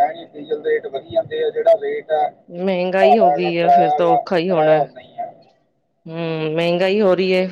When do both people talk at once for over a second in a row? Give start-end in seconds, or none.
3.0-4.8